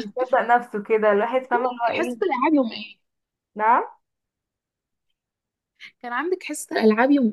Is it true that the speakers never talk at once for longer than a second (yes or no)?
yes